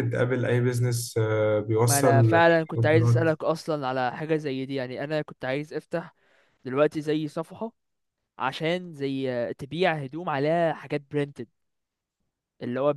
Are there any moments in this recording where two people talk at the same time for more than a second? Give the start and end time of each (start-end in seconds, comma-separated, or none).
1.8-3.3